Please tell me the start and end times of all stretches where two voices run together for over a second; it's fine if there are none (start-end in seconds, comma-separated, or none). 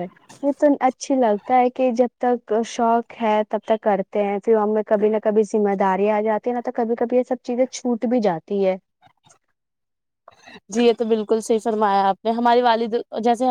none